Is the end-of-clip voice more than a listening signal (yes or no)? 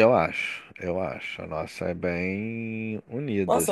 yes